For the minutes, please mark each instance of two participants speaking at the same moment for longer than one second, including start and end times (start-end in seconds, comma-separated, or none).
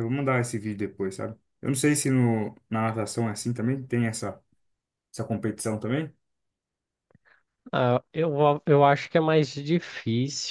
none